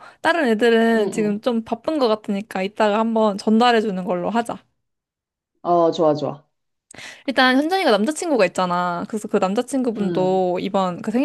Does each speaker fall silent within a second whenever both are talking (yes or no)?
yes